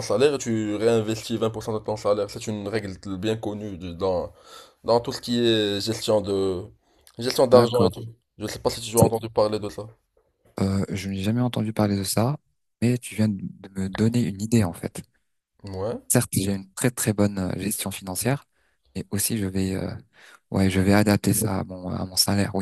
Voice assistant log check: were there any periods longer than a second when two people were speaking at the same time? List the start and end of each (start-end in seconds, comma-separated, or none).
none